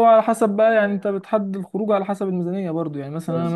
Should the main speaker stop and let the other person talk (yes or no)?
no